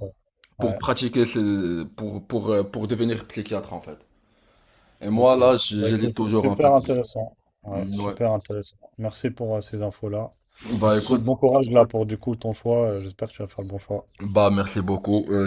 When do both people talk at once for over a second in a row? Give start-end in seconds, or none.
5.1-6.7